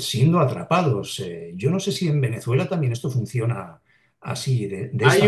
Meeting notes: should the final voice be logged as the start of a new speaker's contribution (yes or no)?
yes